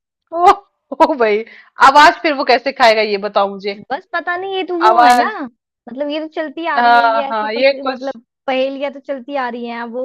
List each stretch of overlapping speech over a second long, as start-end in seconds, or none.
6.8-8.2